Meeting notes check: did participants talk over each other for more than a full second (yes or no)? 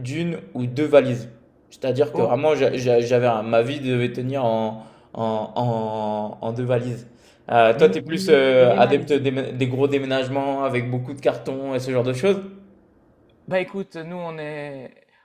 yes